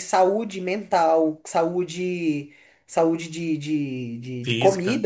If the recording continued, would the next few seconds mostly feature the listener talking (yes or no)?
no